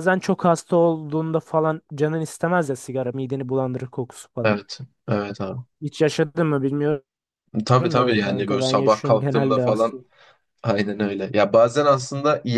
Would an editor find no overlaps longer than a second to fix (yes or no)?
no